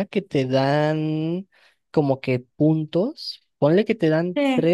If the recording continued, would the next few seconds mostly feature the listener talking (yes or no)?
no